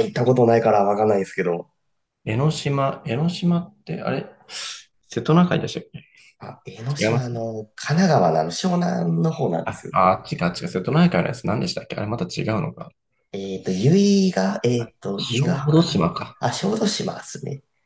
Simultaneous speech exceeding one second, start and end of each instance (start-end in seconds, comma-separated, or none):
14.8-16.4